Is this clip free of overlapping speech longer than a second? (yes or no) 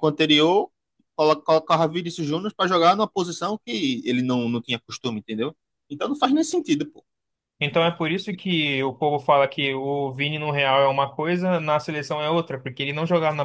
yes